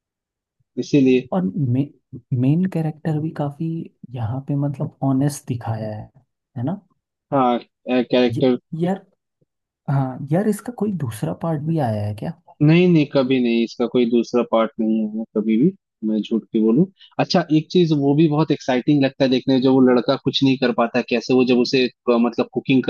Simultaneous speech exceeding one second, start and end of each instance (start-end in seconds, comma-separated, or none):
none